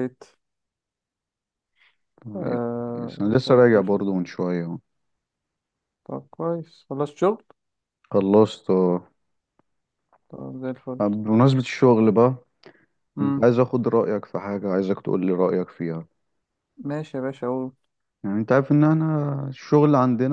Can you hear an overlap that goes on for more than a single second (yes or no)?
yes